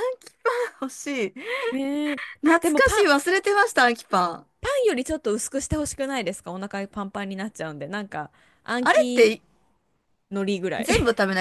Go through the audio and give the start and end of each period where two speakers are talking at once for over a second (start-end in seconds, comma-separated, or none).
none